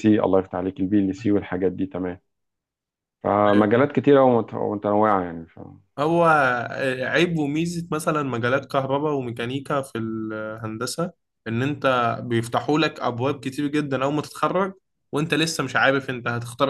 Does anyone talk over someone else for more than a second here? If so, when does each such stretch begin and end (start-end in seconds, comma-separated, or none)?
none